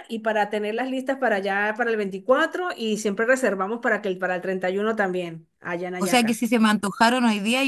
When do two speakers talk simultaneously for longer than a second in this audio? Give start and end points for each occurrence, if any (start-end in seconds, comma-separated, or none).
none